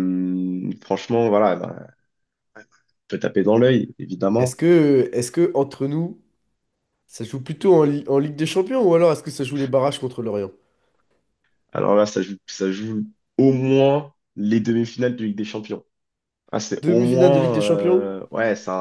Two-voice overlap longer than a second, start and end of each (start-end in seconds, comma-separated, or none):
16.8-18.1